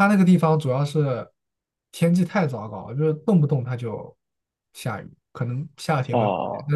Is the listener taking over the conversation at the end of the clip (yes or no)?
no